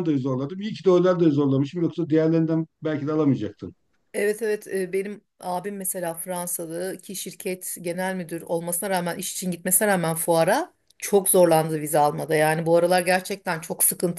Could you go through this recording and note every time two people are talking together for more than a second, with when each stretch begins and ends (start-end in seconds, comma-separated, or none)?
none